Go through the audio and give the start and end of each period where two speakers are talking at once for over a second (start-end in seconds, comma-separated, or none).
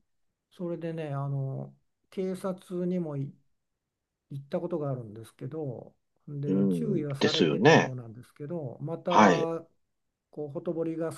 6.5-8.0